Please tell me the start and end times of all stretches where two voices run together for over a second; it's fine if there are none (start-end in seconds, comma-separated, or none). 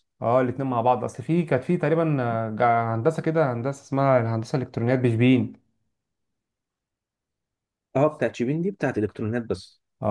none